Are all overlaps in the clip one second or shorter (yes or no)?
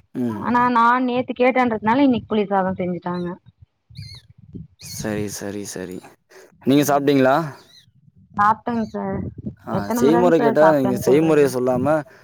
no